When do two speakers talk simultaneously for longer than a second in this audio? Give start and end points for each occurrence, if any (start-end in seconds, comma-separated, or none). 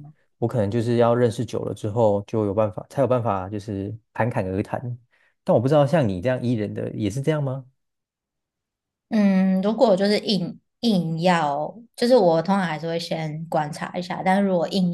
none